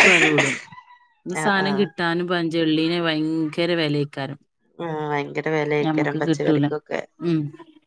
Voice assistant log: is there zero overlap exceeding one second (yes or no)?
yes